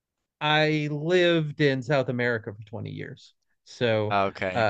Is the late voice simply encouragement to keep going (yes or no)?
yes